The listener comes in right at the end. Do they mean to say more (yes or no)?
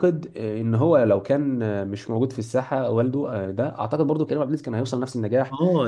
yes